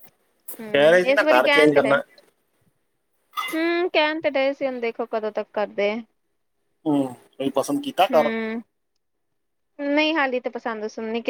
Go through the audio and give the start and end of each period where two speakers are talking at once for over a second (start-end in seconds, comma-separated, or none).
0.7-1.9